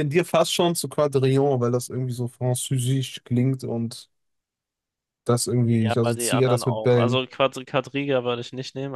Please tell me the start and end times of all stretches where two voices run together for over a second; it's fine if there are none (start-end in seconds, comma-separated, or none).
5.7-7.2